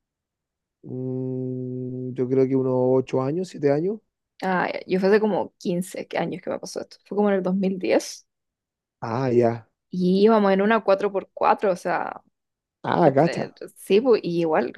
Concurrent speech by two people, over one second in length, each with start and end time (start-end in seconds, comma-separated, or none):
none